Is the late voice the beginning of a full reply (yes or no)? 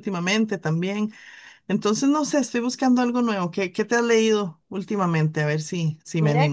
yes